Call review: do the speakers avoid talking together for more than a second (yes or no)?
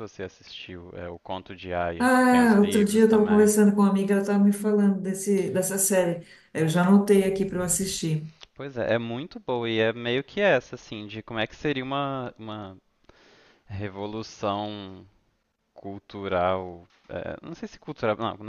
no